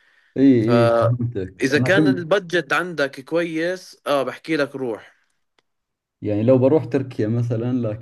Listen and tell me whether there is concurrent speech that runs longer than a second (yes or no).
yes